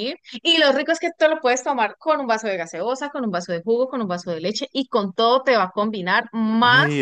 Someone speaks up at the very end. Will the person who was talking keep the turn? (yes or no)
no